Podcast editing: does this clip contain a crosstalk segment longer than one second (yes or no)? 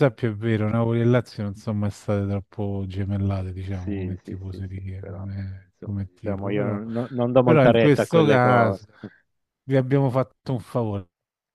yes